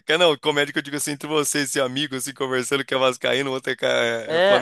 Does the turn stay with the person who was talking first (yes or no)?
no